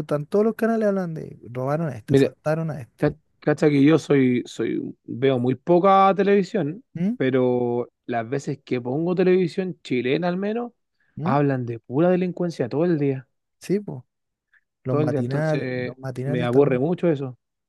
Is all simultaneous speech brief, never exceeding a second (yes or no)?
no